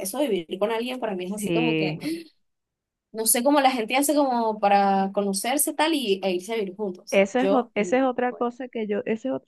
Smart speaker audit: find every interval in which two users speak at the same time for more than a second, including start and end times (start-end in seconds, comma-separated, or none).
7.1-8.4